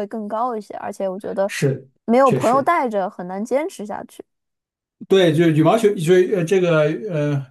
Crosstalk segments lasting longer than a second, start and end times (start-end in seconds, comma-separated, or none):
none